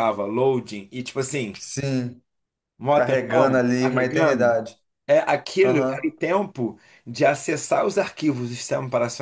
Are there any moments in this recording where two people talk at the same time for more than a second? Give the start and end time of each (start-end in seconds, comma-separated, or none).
2.9-4.6